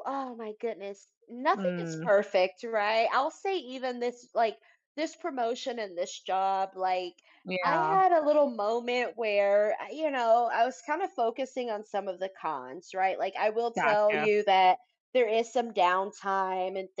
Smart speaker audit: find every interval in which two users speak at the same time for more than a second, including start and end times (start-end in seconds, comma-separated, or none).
none